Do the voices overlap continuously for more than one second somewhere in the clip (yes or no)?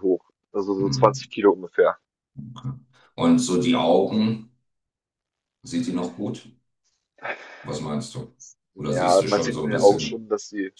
yes